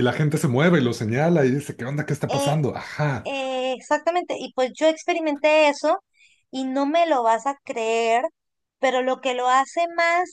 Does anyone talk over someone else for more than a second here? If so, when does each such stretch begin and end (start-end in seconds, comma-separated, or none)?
none